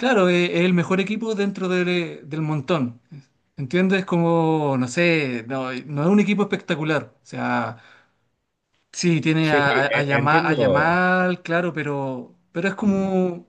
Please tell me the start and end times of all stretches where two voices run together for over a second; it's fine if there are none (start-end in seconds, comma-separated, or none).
9.4-11.0